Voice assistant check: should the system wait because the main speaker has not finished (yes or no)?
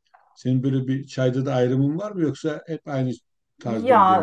no